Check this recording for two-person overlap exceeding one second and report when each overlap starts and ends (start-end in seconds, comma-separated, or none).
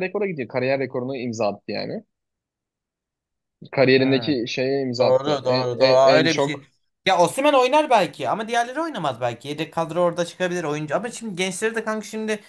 5.0-6.7